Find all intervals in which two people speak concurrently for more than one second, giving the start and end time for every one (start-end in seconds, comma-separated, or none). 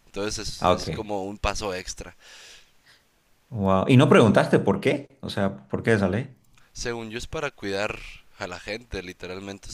none